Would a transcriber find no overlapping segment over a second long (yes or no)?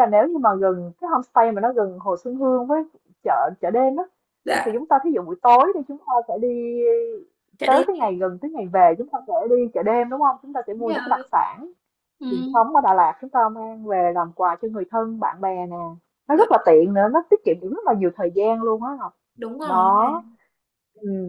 yes